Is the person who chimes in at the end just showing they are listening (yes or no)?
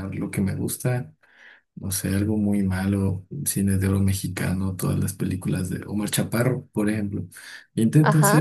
yes